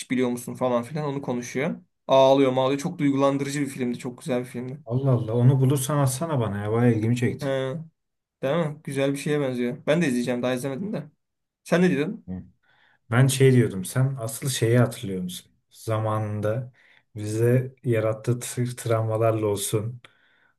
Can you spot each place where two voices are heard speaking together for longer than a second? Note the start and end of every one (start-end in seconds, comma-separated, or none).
none